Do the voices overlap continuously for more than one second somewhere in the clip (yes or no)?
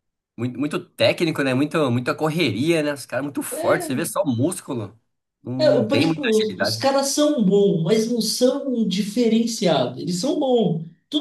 yes